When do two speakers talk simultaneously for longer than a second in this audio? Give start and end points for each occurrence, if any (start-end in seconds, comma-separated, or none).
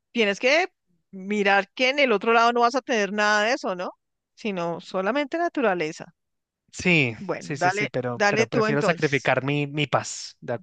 7.2-9.3